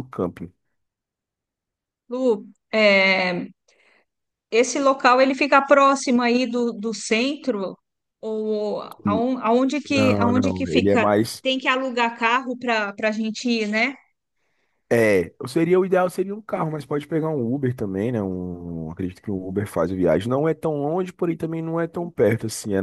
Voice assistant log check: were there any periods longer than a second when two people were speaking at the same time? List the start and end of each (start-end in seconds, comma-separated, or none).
9.9-11.4